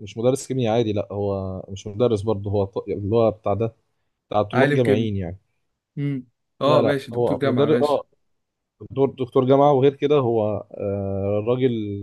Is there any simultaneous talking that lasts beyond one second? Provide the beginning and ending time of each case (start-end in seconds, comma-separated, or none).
6.6-8.0